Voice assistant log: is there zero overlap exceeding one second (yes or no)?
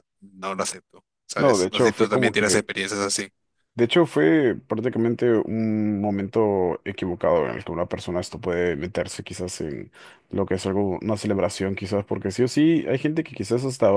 no